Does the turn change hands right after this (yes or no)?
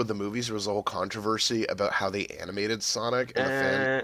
no